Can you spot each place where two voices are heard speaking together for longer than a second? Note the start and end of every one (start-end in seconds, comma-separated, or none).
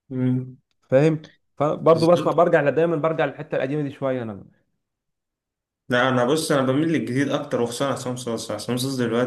none